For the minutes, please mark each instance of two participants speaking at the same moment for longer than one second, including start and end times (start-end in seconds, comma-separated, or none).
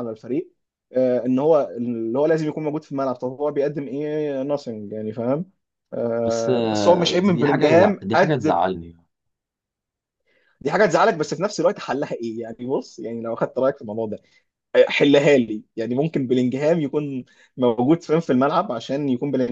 6.2-8.6